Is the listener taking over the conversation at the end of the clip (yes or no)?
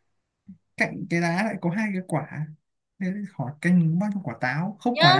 yes